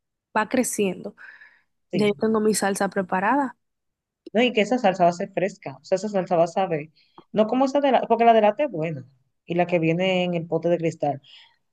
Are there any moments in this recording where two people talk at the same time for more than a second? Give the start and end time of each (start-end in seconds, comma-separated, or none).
none